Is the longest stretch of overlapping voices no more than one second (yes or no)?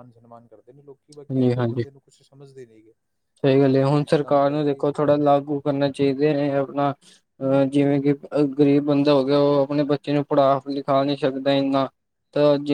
yes